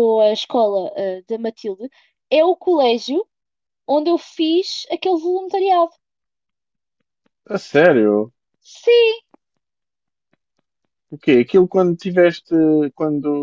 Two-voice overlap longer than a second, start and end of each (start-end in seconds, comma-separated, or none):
none